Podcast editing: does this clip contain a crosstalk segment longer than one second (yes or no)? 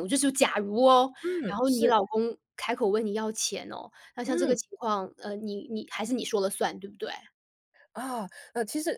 no